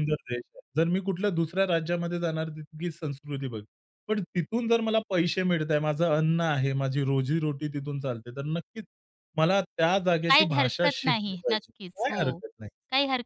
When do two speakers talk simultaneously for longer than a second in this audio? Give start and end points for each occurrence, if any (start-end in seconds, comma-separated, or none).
10.3-12.4